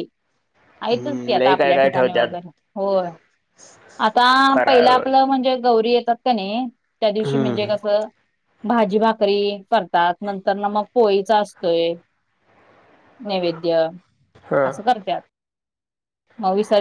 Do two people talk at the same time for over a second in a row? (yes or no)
yes